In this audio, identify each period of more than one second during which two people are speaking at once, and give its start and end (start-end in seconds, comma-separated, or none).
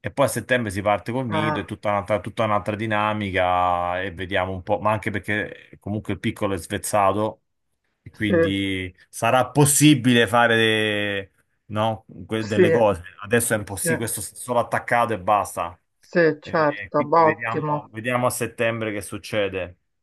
16.4-17.9